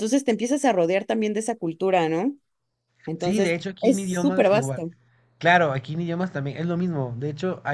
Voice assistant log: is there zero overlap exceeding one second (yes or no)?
no